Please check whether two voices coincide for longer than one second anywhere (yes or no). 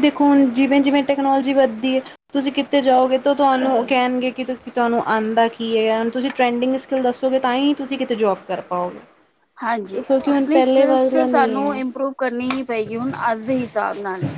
yes